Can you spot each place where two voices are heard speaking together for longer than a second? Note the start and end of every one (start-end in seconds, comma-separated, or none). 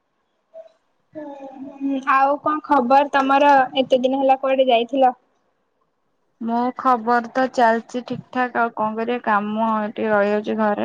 none